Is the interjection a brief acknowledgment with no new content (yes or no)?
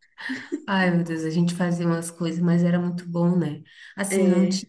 yes